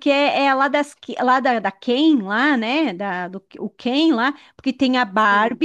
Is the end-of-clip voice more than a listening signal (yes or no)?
no